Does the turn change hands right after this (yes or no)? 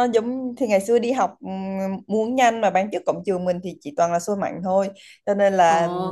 no